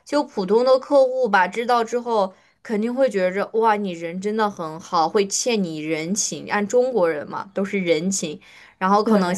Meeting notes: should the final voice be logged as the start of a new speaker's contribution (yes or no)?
no